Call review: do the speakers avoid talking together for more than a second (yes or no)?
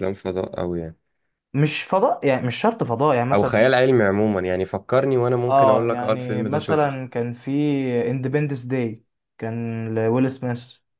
no